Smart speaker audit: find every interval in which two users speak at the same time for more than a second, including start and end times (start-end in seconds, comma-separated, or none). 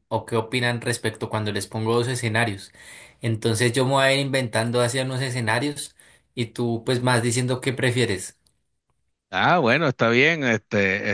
none